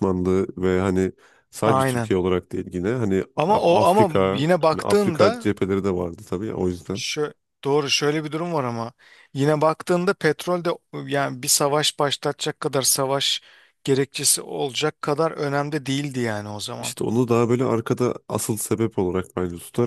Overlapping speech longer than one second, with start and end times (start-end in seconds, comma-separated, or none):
3.4-5.5